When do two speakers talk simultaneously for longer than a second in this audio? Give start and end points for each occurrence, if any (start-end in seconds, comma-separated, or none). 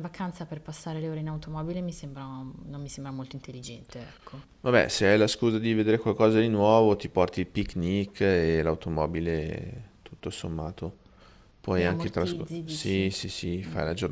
11.8-13.1